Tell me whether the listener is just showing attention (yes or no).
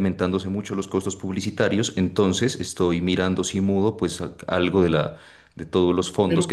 no